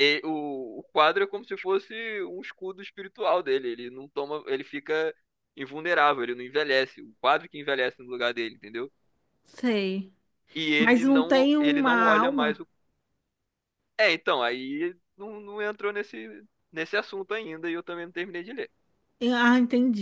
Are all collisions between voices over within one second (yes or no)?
no